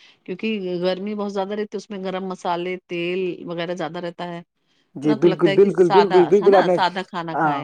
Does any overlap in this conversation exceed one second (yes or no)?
yes